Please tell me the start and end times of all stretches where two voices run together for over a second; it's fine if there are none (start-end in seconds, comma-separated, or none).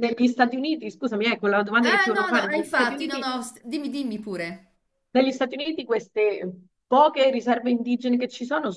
1.8-3.3